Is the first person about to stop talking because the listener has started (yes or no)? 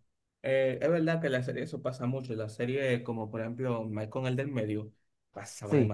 yes